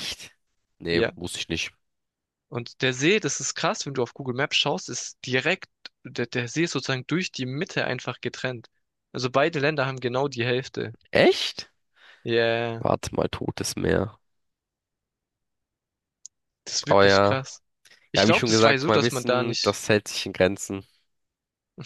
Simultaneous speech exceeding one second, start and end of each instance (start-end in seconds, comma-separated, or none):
18.2-19.8